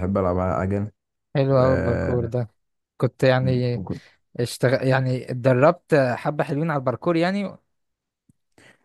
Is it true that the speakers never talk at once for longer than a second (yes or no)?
yes